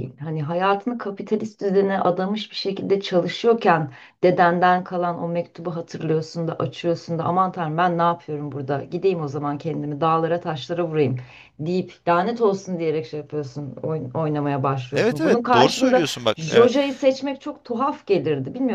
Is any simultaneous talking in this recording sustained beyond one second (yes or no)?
yes